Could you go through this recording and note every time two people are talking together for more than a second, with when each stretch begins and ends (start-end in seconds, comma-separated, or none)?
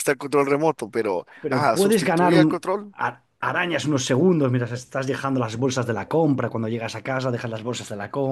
1.4-3.0